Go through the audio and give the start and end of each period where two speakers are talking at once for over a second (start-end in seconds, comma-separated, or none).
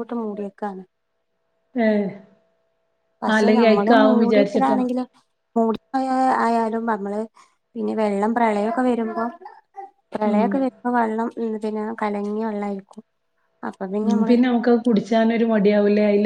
3.4-4.8